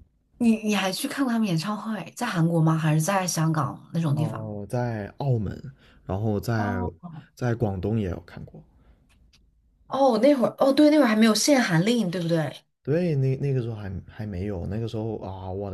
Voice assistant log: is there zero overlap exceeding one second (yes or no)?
yes